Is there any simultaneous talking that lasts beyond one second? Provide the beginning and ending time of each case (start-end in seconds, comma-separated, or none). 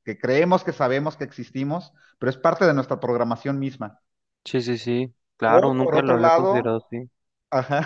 5.4-6.7